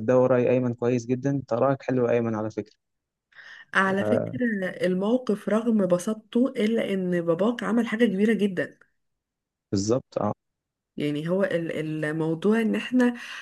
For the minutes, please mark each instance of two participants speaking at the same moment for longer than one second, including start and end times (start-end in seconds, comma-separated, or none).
none